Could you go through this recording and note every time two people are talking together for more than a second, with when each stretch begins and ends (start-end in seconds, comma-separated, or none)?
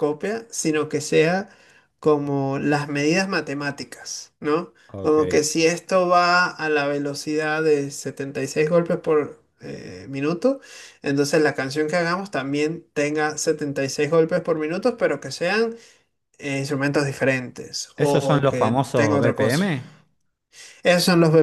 18.0-19.6